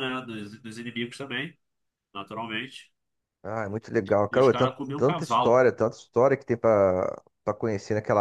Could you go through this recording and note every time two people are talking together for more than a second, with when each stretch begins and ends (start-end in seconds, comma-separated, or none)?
4.3-5.5